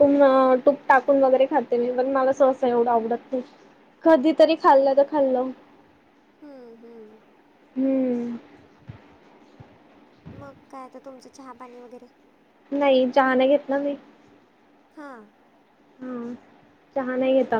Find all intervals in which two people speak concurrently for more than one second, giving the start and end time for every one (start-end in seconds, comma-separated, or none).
none